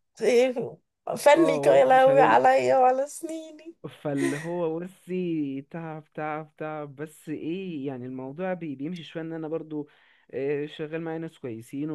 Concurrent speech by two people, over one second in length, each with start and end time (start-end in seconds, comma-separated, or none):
1.4-2.6